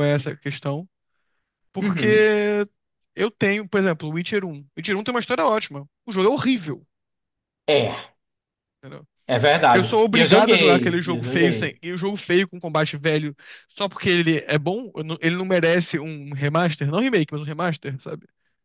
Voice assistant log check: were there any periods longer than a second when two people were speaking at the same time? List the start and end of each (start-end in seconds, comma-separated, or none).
9.7-11.8